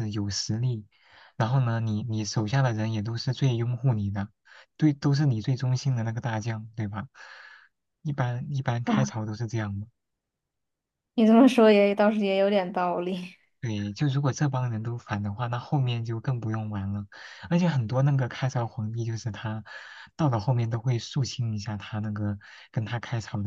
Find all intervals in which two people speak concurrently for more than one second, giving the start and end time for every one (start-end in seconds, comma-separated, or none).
none